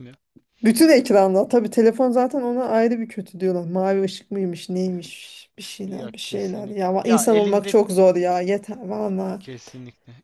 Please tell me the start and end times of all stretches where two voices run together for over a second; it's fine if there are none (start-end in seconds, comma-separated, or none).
5.8-7.7